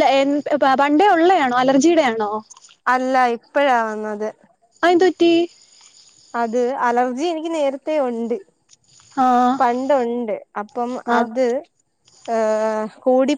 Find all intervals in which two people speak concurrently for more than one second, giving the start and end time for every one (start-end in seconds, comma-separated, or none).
none